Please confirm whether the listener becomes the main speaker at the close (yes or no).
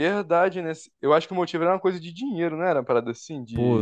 yes